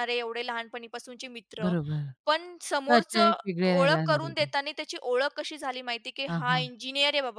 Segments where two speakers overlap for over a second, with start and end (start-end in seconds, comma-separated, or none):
2.9-4.5